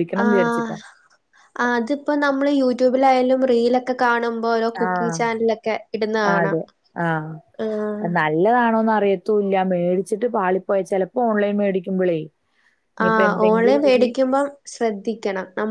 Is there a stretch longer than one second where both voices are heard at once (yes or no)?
no